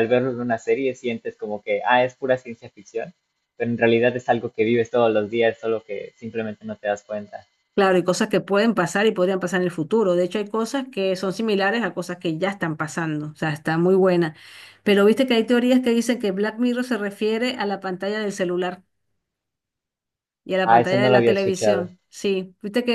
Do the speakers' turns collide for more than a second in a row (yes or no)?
yes